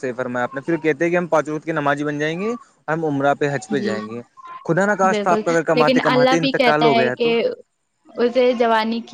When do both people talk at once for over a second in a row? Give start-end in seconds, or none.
5.1-7.3